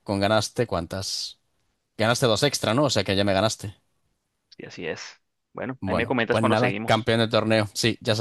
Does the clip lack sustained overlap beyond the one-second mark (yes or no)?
no